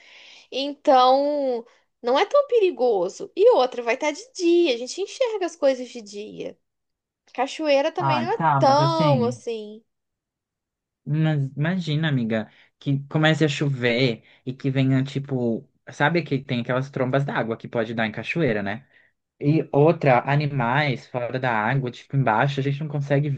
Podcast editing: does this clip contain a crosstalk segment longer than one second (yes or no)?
yes